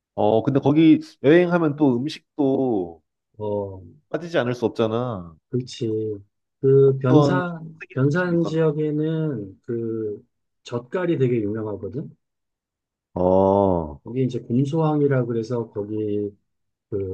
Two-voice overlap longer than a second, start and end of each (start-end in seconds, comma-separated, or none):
7.1-8.7